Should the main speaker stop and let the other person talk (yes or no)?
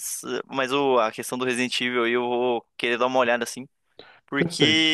no